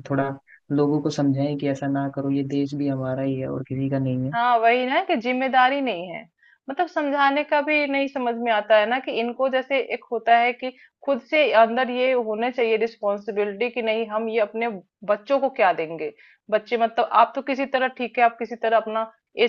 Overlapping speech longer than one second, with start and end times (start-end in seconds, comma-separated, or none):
none